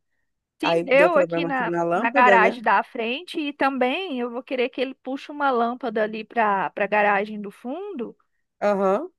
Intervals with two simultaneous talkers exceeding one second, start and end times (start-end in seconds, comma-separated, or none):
0.6-2.6